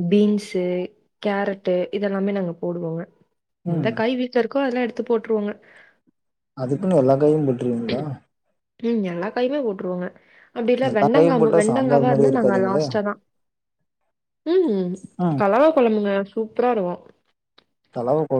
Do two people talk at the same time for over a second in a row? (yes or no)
yes